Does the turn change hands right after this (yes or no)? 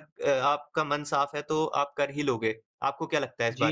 yes